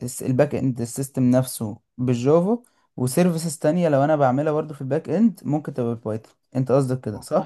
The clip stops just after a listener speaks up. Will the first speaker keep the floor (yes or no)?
no